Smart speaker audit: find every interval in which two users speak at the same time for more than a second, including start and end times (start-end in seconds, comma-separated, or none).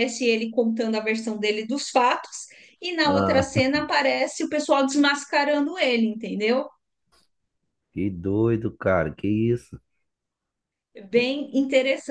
none